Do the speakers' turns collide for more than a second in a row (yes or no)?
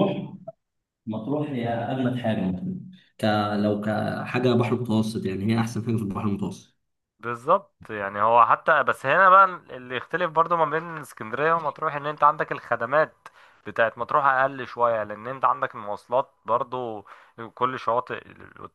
no